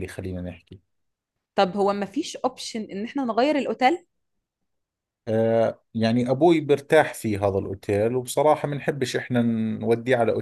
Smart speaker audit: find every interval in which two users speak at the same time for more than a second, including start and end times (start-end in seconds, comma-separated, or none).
none